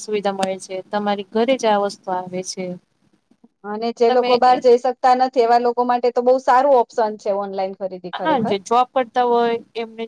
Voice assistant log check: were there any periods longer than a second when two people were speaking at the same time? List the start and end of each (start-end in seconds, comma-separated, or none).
none